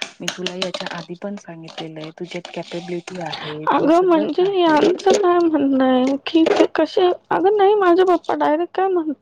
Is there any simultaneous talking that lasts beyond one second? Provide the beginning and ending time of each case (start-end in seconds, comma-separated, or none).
3.7-5.2